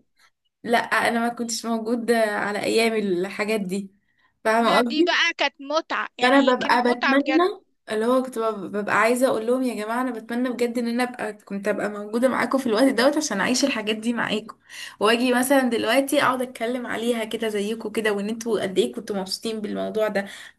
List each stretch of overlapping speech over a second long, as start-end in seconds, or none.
6.2-7.5